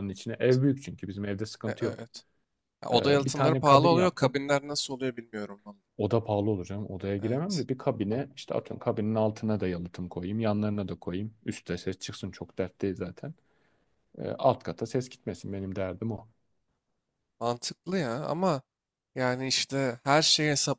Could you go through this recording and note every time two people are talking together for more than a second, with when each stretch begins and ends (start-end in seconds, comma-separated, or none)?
2.9-4.3